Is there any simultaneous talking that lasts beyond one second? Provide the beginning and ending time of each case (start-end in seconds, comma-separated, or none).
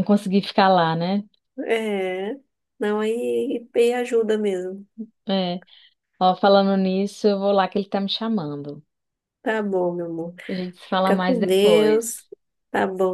11.0-12.2